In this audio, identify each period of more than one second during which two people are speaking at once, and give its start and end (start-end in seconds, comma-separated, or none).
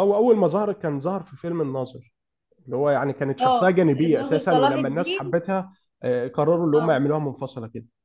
3.4-5.4